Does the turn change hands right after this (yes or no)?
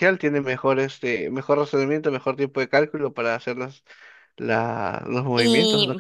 yes